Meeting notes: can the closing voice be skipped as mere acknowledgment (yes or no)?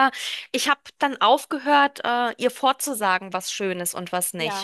yes